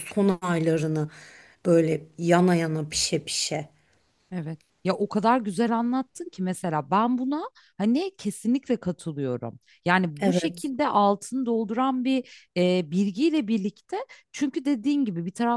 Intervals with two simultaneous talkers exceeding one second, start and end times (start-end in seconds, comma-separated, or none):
none